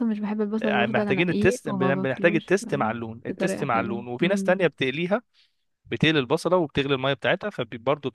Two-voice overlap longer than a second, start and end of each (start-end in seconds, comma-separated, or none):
0.6-2.6, 3.3-4.5